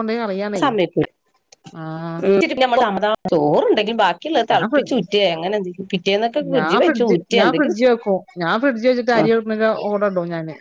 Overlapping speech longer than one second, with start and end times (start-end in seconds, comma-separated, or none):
none